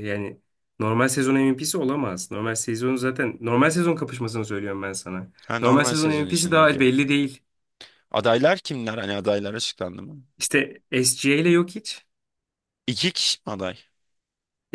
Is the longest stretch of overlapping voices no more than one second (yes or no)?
no